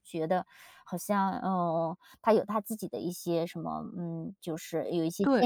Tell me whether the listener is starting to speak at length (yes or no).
yes